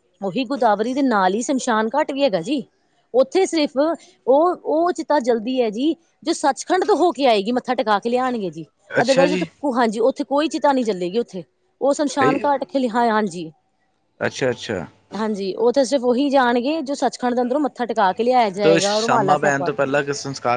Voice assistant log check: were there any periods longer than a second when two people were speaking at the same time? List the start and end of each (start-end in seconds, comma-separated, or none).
18.6-19.8